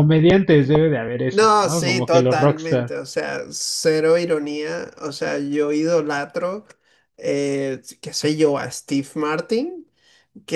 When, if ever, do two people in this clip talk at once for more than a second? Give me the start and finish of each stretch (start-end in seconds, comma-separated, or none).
1.3-3.0